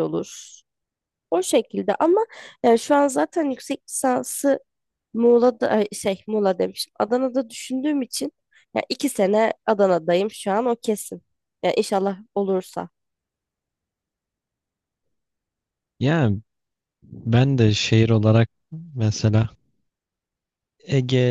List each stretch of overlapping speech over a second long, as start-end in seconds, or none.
none